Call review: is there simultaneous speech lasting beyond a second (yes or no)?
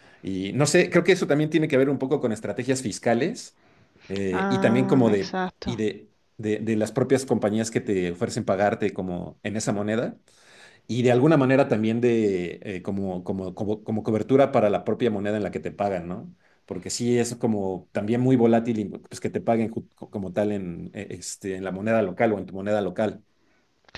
yes